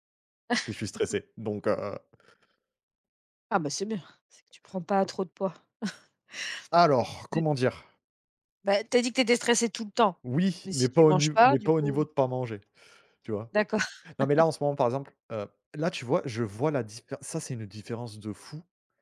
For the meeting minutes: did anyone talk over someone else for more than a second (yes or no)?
yes